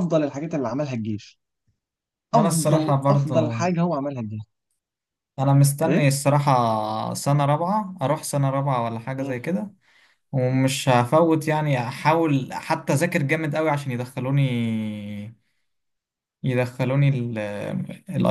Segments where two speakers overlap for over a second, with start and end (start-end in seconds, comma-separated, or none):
2.3-3.6